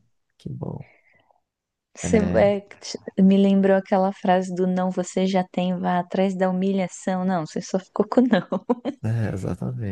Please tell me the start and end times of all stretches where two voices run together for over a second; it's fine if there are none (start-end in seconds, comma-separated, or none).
none